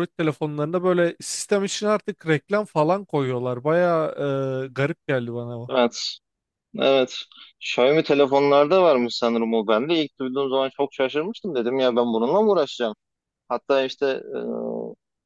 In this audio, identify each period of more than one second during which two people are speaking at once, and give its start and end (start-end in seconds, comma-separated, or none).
none